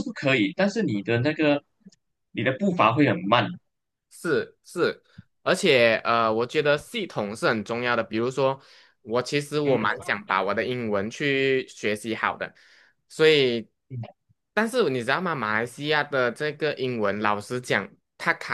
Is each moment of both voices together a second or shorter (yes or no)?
yes